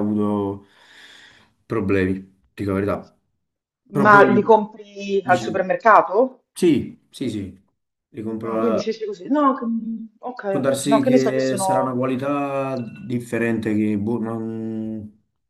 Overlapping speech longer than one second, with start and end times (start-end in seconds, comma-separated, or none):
10.5-12.0